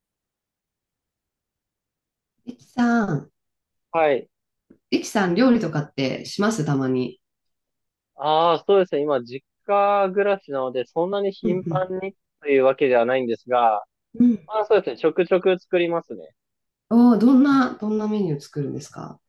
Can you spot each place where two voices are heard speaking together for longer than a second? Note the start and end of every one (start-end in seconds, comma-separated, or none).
none